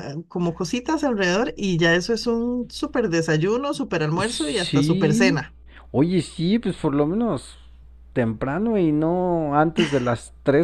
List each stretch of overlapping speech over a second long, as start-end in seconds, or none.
4.2-5.4